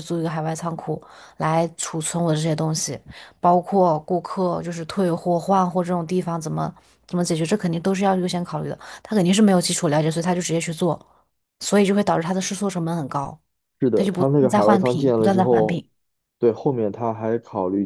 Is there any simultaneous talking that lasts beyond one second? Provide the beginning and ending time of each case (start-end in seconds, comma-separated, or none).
13.9-15.8